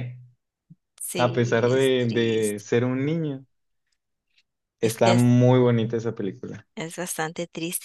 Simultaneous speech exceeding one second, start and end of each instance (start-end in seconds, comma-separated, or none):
1.1-2.6